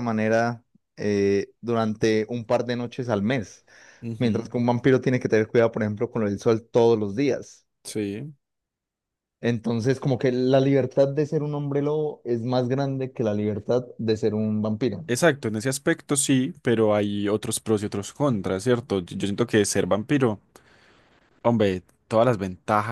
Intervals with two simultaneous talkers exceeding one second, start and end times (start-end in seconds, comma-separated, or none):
none